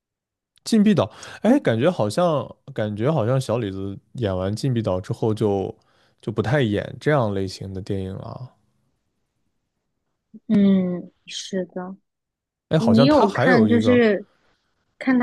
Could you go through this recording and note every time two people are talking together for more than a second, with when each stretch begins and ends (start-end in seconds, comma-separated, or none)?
12.8-14.0